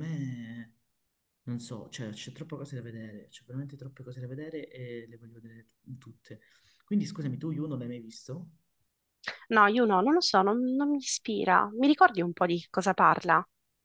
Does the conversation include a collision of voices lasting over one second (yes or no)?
no